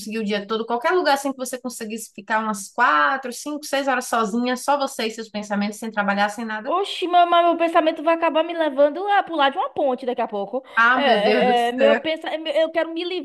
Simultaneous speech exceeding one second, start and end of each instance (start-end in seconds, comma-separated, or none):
10.8-12.0